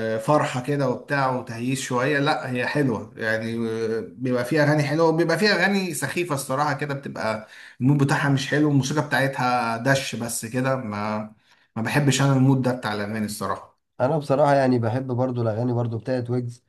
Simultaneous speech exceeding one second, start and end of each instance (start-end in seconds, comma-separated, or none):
none